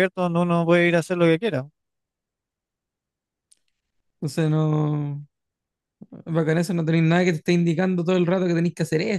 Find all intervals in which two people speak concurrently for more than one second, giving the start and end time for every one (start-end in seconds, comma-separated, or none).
none